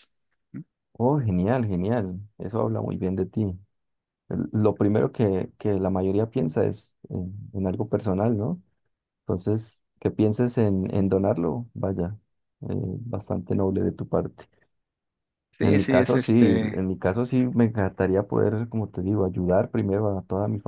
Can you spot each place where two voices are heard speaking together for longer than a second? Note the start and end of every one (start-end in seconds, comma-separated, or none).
15.6-16.9